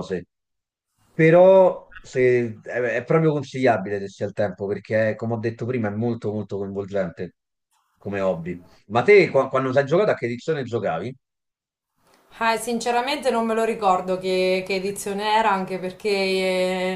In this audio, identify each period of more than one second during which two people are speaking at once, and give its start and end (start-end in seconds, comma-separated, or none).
none